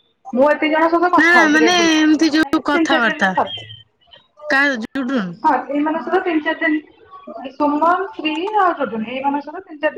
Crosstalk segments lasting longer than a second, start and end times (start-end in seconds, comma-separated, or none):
1.2-3.3